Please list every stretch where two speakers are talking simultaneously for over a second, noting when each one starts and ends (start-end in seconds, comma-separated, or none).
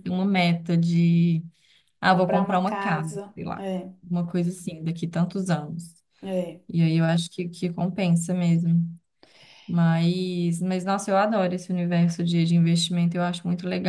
2.0-3.6